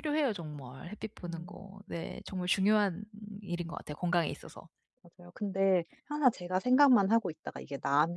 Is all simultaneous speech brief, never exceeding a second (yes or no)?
yes